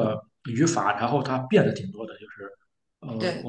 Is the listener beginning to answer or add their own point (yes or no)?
no